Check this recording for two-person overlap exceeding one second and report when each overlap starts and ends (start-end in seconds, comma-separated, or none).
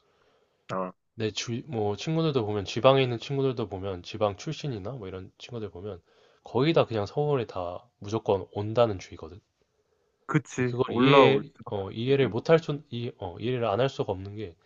10.6-12.7